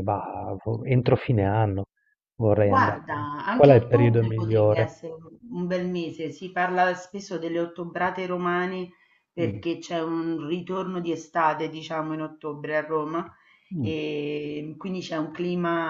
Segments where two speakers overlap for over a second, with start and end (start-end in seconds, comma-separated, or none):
2.6-4.9